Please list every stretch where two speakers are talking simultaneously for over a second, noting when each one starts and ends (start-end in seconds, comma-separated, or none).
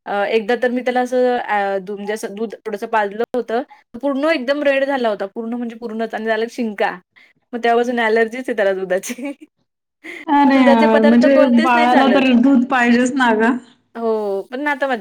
10.5-12.2